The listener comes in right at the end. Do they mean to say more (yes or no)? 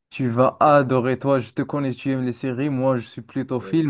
no